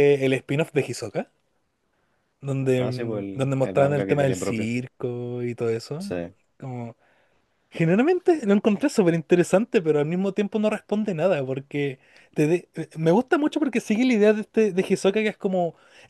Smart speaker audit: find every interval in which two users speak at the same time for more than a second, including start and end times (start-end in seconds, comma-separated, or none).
2.8-4.7